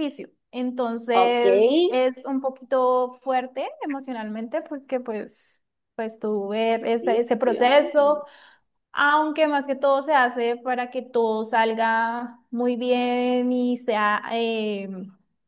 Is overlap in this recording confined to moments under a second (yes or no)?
no